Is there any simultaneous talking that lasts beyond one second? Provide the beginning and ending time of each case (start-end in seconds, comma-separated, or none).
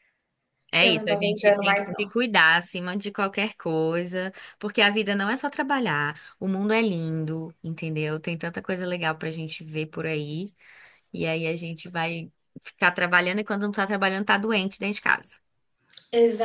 0.8-2.1